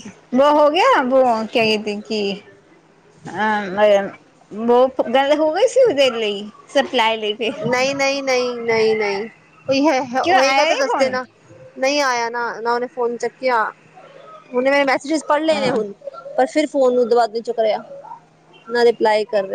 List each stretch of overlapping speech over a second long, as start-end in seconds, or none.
none